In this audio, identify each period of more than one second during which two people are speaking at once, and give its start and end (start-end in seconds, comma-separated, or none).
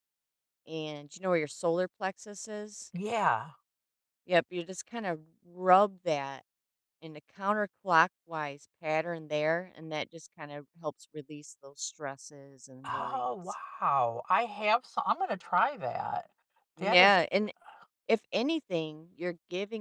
none